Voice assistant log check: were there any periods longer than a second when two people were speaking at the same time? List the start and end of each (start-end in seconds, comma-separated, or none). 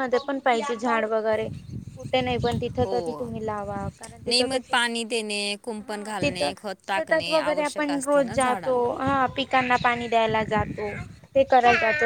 5.8-8.9